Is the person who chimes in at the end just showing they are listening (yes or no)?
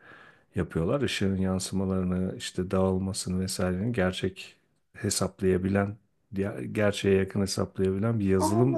no